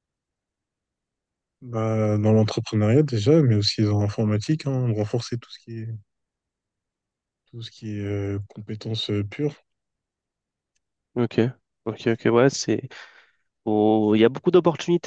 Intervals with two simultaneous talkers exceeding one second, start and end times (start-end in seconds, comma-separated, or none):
none